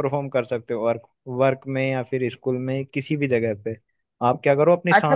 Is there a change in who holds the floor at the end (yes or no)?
yes